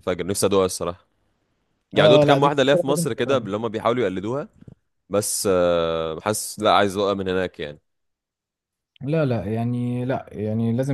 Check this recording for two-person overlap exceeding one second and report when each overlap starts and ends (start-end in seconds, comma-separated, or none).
2.0-3.5